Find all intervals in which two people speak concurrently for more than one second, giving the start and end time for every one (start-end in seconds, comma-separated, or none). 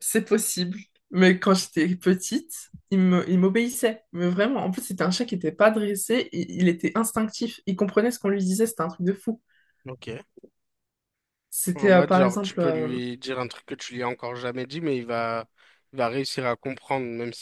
11.7-13.0